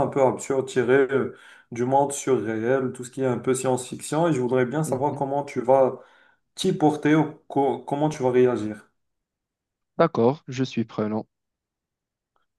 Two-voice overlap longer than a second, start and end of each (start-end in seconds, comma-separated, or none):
none